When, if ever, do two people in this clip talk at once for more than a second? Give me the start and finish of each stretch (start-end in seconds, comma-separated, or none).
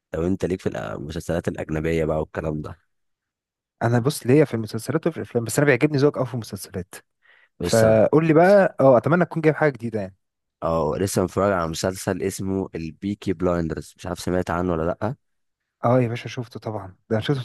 none